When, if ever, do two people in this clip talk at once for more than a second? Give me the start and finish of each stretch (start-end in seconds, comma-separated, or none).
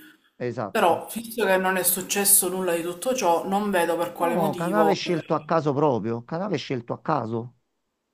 4.2-5.6